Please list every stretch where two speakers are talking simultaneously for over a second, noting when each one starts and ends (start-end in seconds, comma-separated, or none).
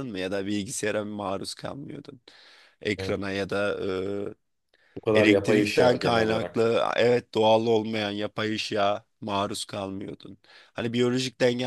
5.1-6.6